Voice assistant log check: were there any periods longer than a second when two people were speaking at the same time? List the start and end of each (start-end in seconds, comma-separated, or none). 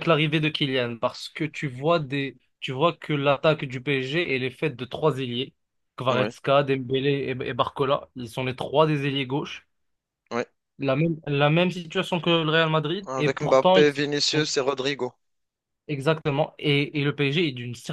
13.1-14.5